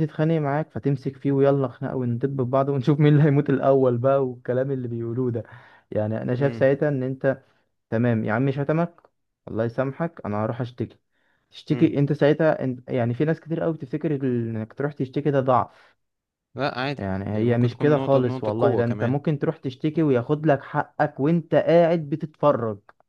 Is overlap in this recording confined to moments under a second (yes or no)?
no